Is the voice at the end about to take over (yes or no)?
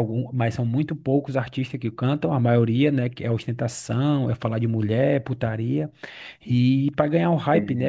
no